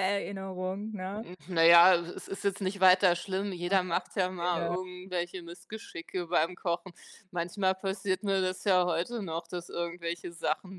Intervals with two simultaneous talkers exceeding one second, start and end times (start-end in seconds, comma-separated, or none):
none